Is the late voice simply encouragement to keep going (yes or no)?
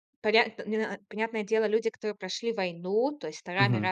yes